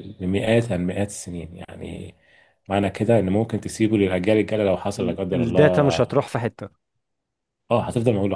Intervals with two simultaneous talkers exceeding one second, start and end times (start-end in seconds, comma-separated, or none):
5.0-6.2